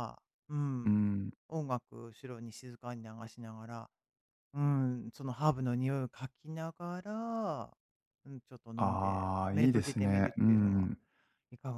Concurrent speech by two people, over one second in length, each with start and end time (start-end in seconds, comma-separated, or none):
8.8-10.9